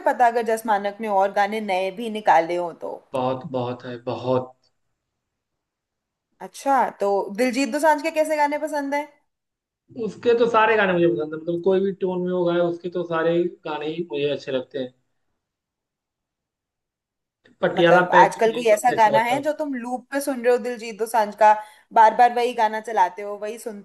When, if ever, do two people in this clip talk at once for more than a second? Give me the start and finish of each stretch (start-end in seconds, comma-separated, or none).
17.8-19.6